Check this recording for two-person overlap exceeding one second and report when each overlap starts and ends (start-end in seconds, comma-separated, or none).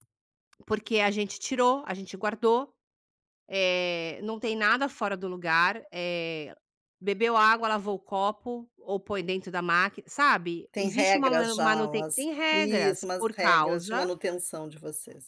10.7-14.1